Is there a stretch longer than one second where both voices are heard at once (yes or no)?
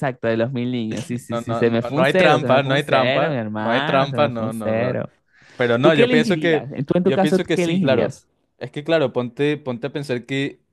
yes